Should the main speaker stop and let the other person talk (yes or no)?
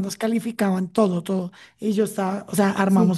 no